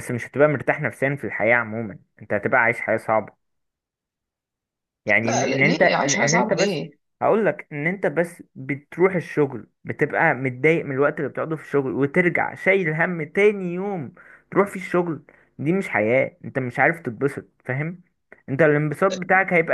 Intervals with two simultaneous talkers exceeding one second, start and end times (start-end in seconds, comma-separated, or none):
5.2-6.8